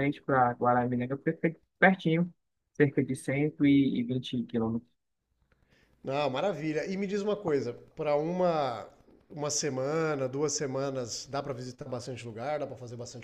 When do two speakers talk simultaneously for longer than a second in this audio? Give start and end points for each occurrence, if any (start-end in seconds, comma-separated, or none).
none